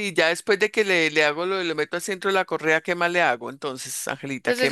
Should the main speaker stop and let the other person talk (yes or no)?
yes